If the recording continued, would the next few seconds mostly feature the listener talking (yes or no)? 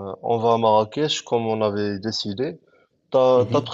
no